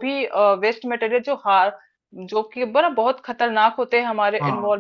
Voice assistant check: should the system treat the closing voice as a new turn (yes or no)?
no